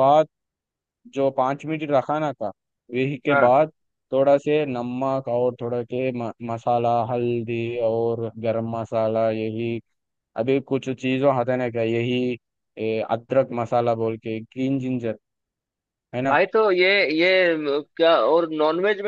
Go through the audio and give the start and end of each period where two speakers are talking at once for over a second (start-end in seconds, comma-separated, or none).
none